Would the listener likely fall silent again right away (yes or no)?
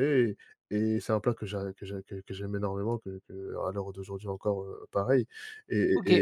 yes